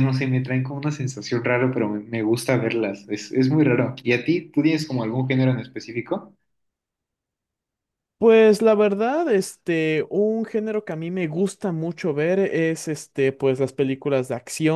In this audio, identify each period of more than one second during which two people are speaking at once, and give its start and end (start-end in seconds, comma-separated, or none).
none